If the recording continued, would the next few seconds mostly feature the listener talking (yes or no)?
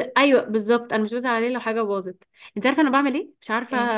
no